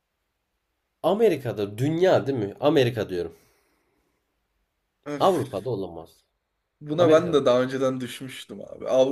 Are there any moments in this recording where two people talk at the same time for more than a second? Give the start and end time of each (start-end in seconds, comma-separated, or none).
none